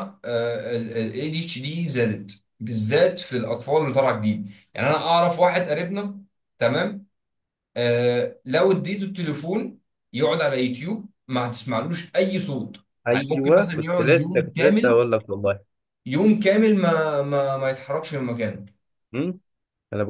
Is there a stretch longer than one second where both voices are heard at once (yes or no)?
yes